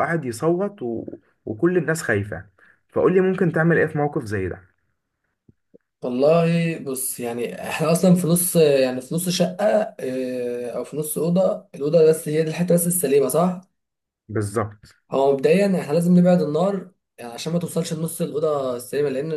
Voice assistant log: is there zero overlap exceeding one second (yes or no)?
yes